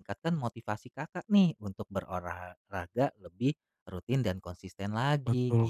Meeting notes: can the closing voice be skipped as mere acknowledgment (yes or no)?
no